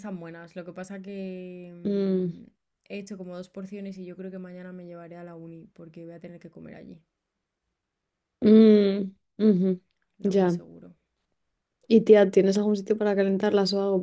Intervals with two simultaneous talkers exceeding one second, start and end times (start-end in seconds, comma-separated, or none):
none